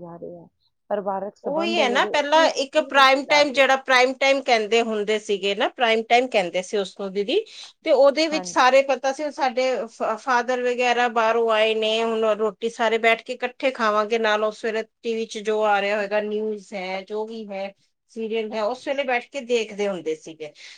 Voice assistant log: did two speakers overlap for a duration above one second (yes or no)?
yes